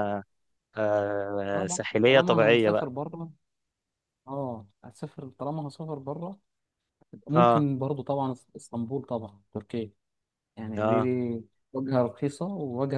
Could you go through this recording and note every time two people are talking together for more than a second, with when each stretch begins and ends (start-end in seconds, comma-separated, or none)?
1.5-2.9